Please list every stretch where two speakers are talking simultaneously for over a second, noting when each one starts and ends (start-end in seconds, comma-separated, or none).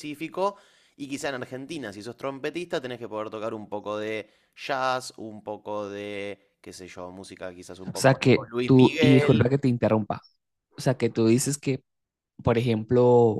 7.9-9.5